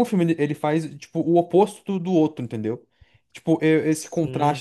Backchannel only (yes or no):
yes